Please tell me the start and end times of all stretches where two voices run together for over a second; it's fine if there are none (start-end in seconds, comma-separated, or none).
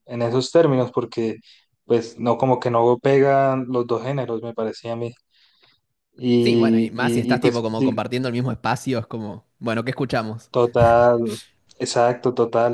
6.4-8.0